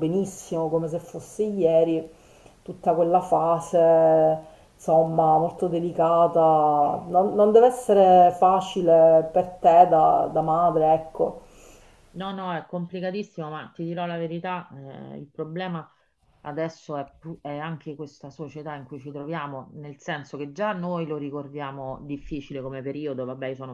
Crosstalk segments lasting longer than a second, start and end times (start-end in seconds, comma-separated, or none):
none